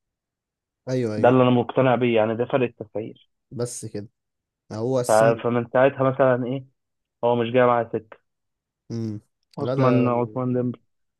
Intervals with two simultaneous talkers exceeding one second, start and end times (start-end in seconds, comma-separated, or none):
none